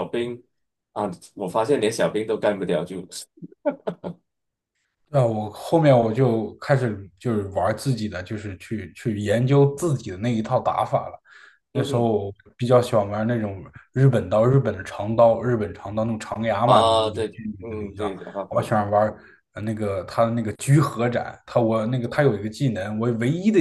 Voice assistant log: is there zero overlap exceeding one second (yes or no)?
no